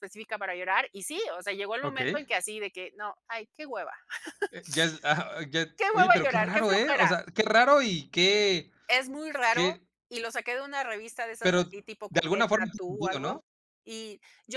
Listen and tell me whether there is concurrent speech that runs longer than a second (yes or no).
yes